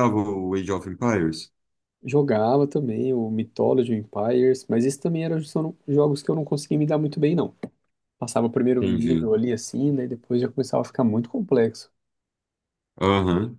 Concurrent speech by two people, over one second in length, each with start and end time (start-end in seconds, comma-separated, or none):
none